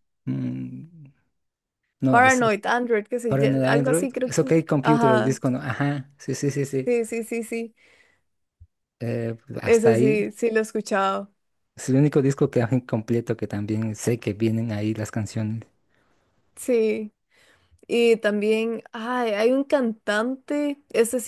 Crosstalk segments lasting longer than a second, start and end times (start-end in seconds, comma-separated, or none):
3.3-5.4